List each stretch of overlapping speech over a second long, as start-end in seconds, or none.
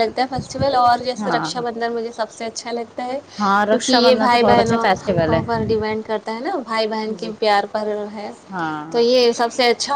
3.4-4.9